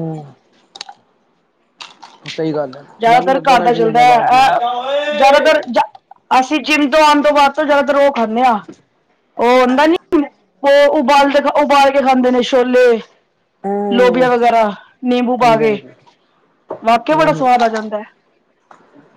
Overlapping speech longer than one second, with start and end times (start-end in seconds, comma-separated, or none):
3.0-4.6